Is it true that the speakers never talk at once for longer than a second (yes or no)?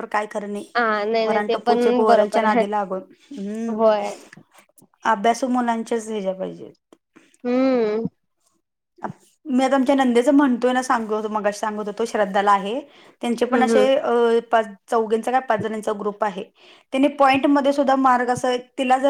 no